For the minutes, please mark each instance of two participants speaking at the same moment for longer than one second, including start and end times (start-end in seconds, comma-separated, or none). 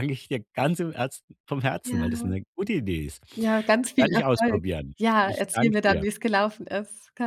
3.8-6.0